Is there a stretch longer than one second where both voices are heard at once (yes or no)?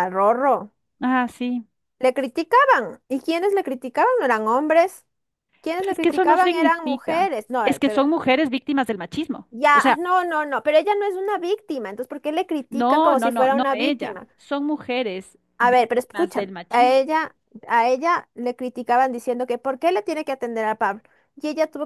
yes